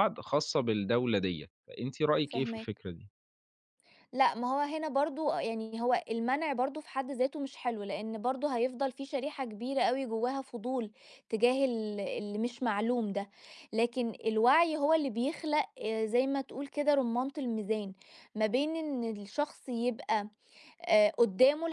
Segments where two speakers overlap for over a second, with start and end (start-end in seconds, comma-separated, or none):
none